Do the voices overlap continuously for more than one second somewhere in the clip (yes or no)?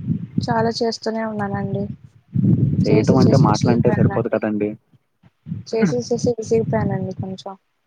yes